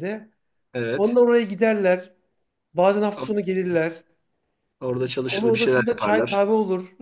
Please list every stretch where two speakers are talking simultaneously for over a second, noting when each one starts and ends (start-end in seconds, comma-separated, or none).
5.0-6.4